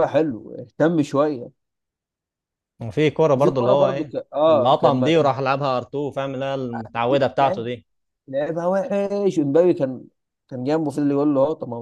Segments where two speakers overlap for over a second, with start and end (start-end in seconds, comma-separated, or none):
3.3-5.1